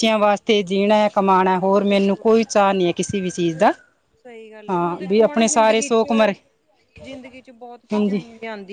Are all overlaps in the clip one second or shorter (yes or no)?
no